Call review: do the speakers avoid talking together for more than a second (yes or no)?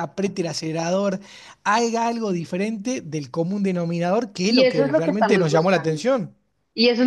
no